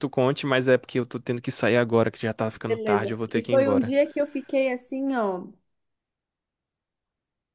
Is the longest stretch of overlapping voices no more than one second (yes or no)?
no